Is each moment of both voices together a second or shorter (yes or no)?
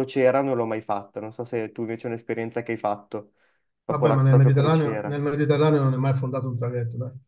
no